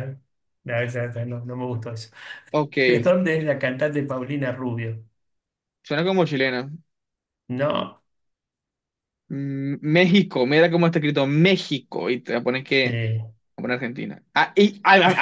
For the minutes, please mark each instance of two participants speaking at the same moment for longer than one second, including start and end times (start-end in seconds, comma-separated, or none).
none